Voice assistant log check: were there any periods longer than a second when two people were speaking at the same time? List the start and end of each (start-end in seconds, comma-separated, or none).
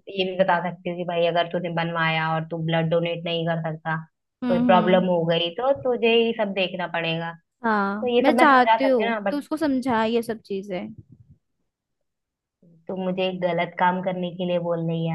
7.8-9.4